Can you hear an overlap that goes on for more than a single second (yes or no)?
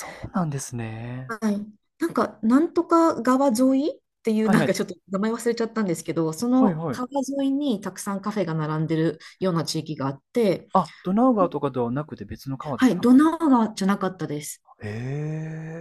no